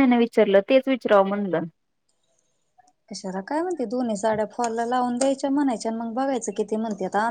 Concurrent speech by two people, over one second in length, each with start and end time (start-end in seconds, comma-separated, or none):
none